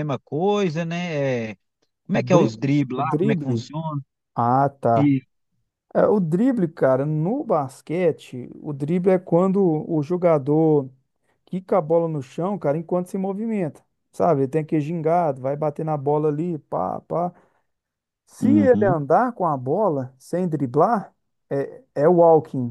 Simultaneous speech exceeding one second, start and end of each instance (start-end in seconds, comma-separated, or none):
2.1-3.7